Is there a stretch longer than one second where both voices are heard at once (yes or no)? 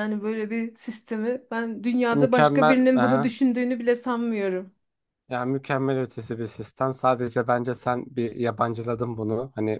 yes